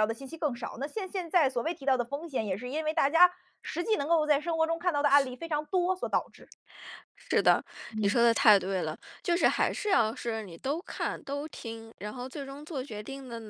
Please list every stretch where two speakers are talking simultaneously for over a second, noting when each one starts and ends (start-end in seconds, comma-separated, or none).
none